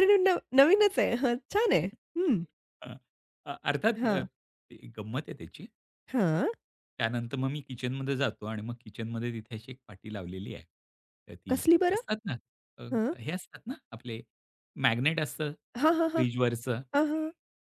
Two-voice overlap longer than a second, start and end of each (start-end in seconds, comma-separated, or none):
none